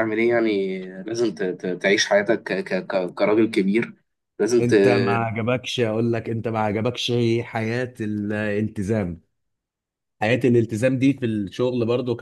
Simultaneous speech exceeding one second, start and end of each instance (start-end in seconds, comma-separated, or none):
none